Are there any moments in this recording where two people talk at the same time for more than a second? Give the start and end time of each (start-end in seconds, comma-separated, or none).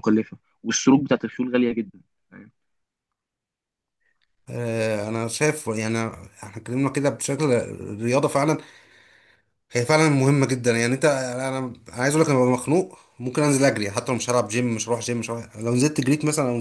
none